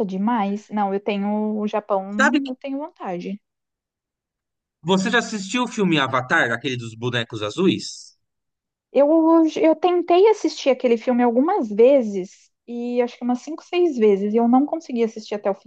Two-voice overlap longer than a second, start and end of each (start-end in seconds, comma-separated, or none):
none